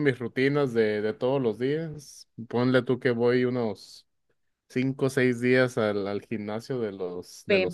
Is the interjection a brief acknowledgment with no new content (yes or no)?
no